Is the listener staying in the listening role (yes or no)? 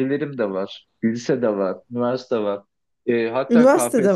yes